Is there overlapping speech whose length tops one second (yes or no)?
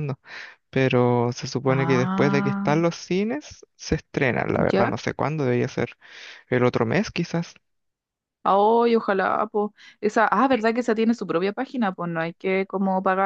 yes